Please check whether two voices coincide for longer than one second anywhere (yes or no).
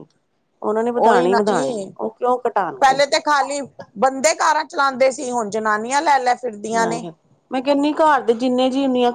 no